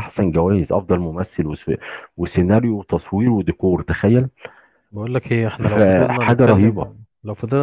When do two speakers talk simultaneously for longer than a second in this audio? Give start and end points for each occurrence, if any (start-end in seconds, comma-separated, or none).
5.6-6.9